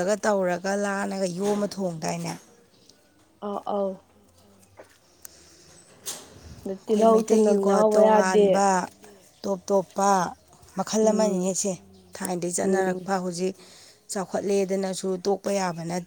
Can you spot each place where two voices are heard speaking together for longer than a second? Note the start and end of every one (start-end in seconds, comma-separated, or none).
6.8-8.6